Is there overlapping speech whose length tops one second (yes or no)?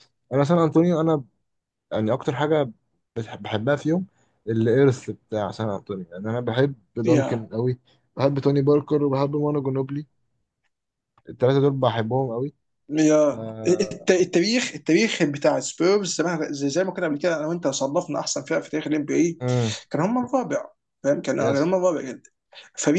no